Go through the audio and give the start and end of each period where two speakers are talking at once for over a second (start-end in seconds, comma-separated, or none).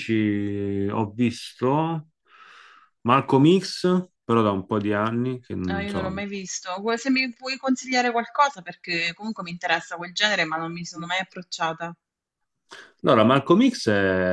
none